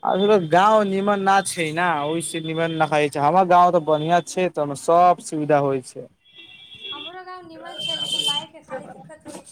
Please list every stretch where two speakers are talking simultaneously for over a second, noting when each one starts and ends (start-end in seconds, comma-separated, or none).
none